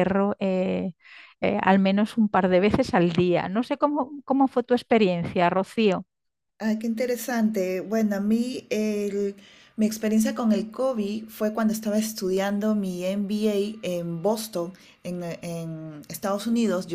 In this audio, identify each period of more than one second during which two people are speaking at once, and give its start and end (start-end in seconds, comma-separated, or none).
none